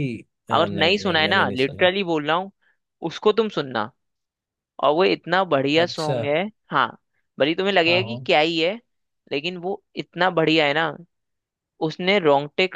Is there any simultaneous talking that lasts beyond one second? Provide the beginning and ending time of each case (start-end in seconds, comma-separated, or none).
0.5-1.9